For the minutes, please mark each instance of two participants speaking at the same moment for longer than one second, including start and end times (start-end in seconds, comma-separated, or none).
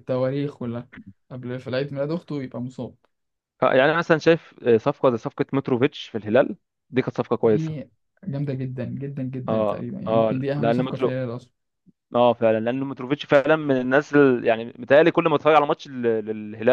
9.5-11.2